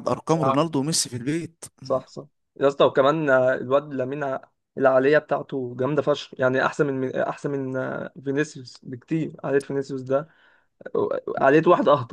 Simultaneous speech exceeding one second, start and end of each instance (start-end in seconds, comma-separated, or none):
none